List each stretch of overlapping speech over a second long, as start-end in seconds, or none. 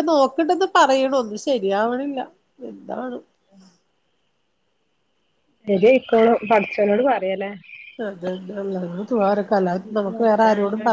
none